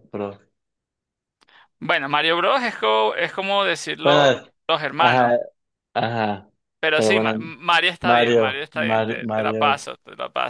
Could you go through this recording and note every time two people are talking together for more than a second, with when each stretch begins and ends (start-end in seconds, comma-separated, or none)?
8.0-9.9